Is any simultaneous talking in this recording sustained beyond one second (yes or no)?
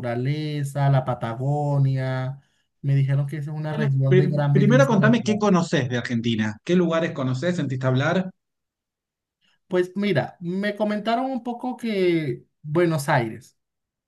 yes